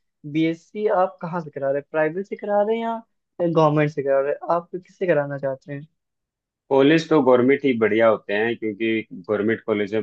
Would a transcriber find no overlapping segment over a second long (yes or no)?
yes